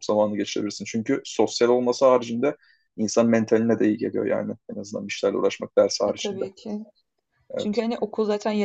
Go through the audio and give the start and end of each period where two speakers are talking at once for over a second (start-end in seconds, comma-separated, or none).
none